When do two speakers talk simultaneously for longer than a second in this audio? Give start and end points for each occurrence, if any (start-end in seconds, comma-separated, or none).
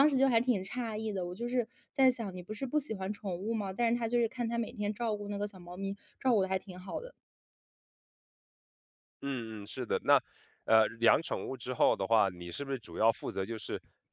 none